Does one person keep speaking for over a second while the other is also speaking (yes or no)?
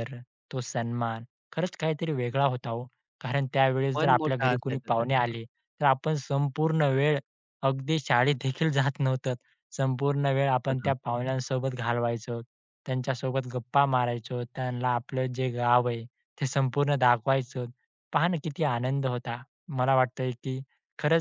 yes